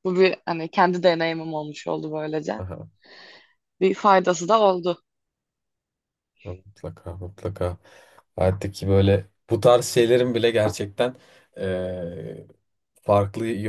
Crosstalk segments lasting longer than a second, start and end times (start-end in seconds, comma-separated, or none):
none